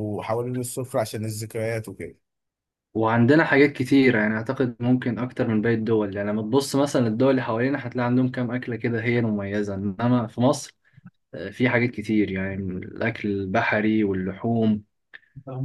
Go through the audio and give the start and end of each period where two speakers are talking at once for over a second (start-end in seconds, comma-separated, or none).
none